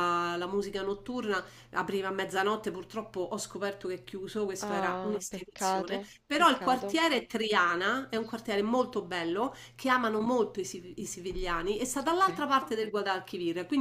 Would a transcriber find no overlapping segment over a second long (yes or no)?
no